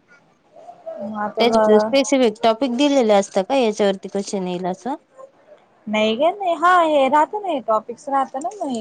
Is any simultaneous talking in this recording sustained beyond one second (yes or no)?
no